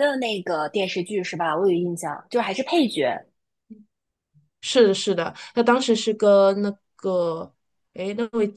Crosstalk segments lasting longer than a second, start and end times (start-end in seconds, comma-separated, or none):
none